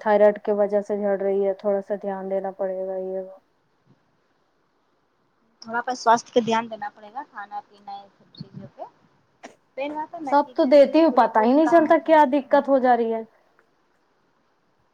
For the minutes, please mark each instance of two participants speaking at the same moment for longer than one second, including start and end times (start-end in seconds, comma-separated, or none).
10.3-12.6